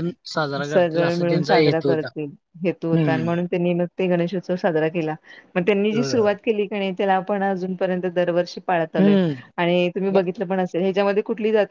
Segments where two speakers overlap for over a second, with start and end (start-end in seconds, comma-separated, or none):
0.6-2.1